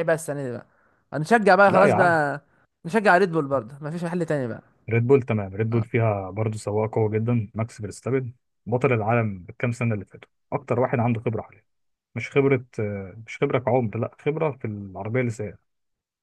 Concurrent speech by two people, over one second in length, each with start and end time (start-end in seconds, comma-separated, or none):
none